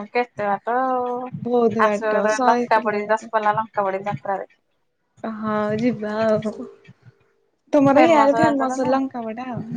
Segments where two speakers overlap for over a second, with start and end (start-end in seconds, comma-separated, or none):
1.4-3.3